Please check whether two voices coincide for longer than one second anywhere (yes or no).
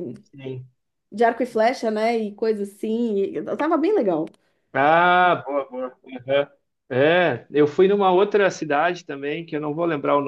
no